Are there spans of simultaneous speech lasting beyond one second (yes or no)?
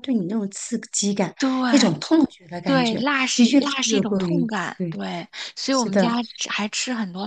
yes